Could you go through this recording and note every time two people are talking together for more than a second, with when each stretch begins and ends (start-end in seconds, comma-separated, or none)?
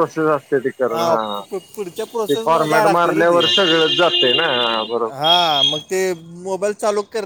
1.2-3.4